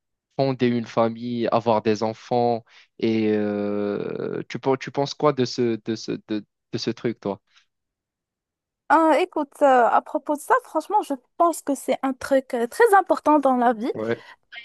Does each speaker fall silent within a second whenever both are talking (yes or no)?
yes